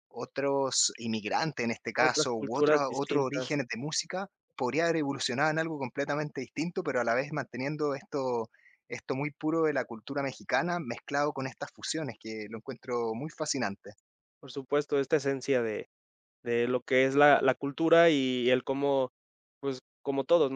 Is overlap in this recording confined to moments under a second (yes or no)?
no